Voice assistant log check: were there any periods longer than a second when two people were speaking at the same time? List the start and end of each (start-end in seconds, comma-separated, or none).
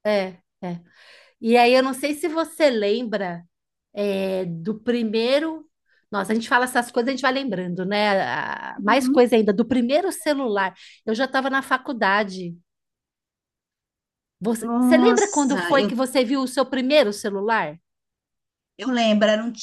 14.6-15.9